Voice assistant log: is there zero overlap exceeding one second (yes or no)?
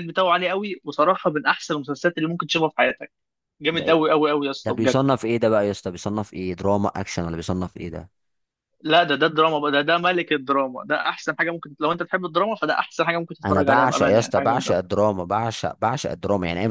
no